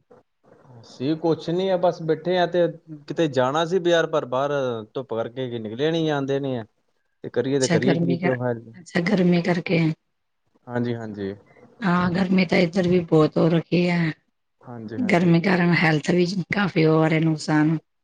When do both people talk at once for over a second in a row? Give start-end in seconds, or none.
none